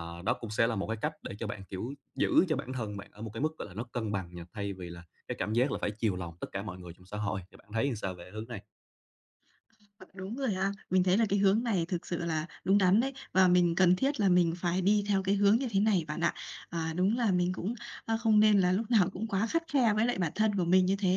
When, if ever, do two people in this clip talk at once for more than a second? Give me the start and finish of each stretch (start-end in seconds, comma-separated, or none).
none